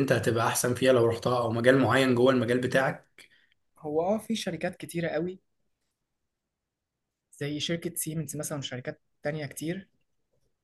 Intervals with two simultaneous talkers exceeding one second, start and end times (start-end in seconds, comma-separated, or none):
none